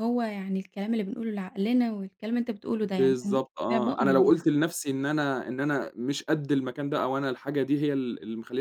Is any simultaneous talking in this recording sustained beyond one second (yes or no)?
yes